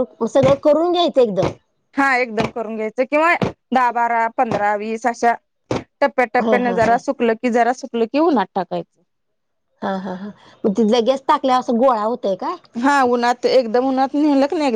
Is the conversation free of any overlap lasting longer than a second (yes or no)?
yes